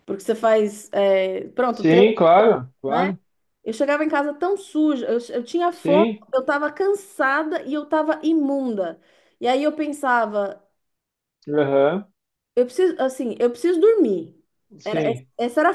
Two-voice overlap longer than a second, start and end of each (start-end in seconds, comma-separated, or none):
none